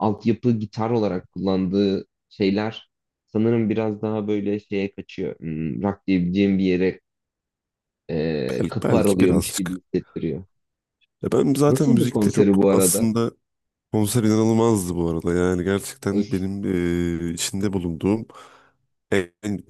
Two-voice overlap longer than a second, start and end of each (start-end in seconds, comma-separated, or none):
8.5-9.8, 11.7-13.1